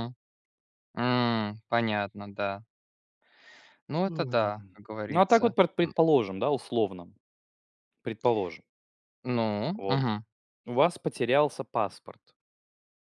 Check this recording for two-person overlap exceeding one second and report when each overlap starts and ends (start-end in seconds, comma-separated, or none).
4.1-5.9